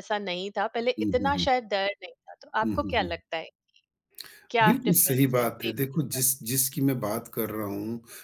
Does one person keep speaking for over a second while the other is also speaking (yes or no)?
yes